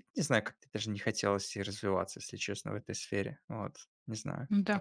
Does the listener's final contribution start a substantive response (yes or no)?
yes